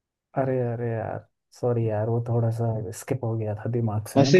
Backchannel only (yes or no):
no